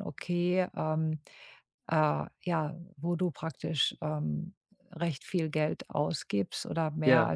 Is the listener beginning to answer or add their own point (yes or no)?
no